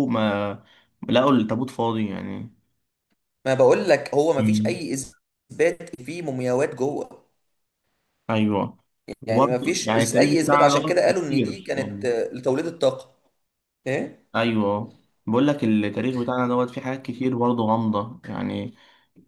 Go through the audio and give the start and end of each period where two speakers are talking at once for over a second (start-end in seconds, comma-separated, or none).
9.3-12.1